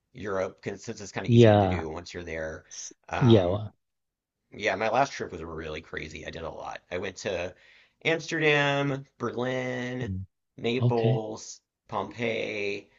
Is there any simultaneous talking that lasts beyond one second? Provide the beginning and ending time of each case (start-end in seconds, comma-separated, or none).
none